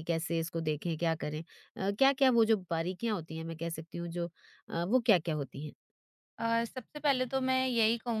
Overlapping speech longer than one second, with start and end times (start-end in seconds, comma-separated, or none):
none